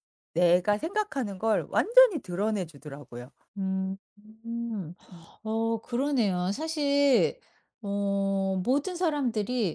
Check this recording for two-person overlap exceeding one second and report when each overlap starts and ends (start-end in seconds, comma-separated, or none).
none